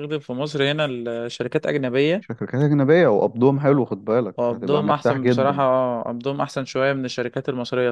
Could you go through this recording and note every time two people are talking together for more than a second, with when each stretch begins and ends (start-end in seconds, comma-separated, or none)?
4.4-5.7